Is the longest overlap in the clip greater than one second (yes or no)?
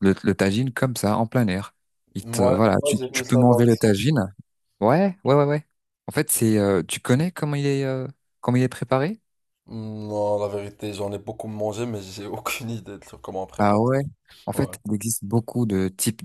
yes